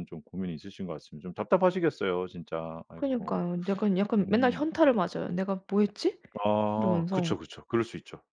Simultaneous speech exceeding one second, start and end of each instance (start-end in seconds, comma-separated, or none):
none